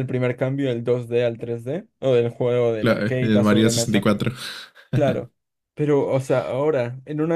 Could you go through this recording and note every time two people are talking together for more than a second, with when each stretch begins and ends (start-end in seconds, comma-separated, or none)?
2.8-4.1